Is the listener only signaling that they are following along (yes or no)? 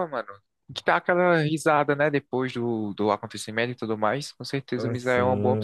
no